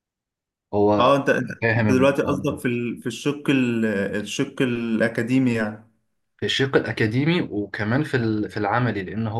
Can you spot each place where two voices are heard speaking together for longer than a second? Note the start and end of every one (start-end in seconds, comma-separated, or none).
1.0-2.6